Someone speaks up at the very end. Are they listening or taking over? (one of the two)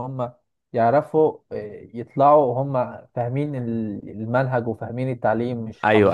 taking over